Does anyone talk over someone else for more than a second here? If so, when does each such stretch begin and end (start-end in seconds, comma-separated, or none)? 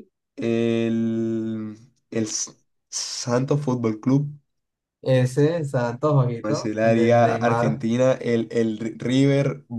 6.4-7.8